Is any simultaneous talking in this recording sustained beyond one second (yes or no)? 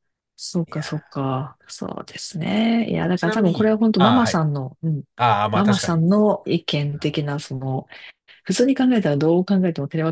yes